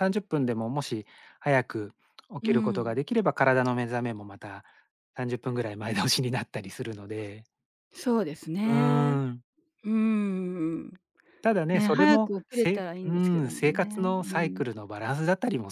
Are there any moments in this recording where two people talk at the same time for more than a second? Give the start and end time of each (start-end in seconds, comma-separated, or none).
11.7-14.6